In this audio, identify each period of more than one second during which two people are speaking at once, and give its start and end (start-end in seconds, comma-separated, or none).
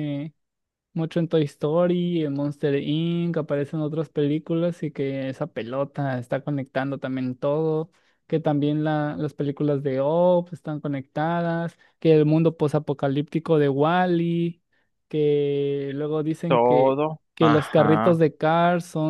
16.5-18.2